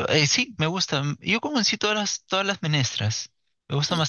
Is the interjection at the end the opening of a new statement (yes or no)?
no